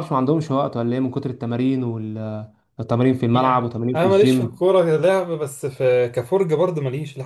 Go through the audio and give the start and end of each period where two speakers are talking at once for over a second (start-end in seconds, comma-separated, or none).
3.3-4.6